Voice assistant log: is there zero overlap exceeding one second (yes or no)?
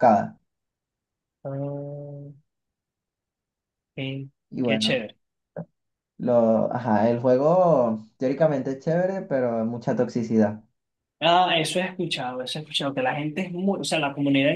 yes